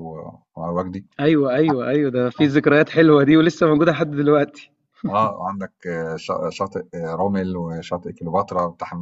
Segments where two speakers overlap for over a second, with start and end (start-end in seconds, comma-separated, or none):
none